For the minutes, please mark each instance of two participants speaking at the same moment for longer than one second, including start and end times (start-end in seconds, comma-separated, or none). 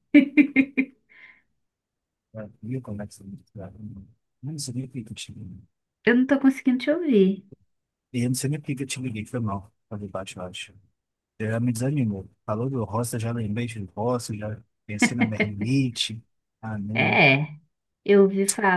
none